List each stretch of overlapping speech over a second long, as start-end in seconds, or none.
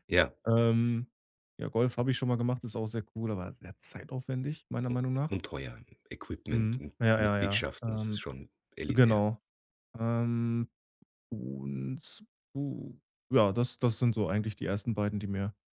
6.5-8.2